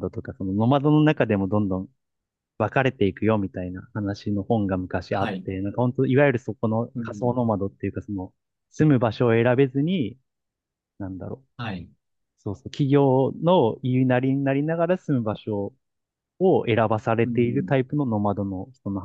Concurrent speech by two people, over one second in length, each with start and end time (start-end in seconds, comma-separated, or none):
none